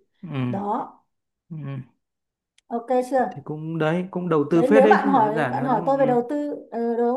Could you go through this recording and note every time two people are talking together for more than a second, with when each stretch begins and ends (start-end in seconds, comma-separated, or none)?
4.5-6.2